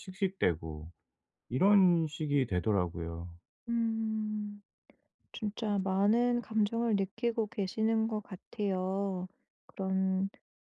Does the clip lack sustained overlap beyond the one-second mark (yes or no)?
yes